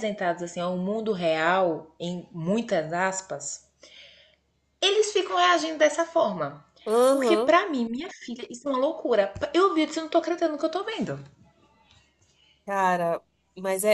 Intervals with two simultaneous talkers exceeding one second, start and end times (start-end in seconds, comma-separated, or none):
none